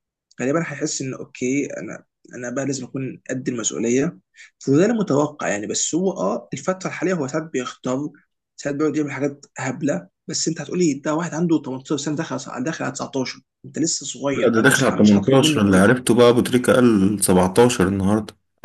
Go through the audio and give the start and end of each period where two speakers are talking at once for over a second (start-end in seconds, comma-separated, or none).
14.3-15.9